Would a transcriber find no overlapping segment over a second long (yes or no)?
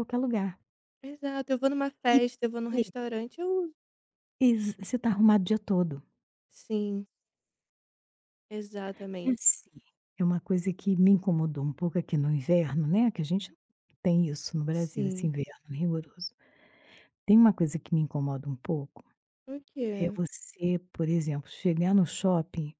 yes